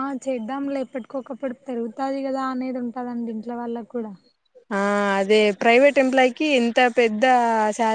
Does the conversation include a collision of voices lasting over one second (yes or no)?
no